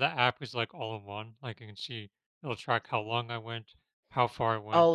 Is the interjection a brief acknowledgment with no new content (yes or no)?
no